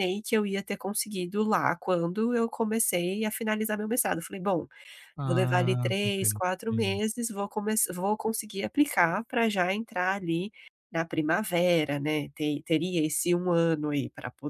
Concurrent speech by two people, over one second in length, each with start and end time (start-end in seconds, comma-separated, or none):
5.2-7.0